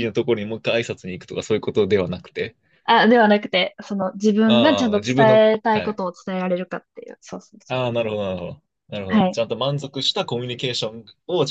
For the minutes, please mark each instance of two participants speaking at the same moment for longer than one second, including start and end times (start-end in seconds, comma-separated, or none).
4.5-6.0